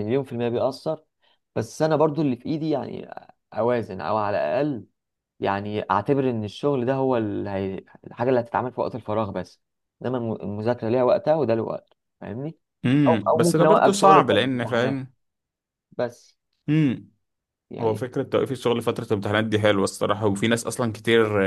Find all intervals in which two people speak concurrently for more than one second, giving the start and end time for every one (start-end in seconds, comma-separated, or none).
13.1-15.0